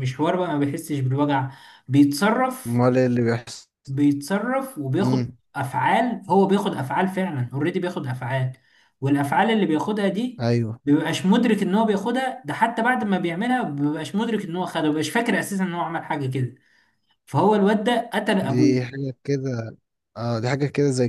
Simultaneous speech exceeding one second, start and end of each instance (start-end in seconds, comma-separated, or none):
none